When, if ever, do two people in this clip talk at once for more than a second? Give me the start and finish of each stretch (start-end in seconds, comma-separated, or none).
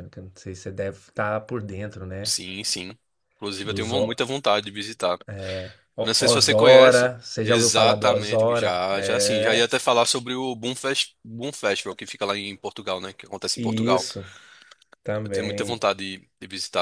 6.0-9.7